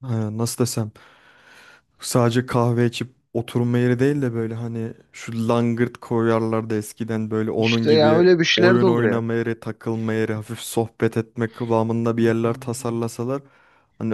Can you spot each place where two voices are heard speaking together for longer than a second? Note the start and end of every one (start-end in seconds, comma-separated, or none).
7.6-9.3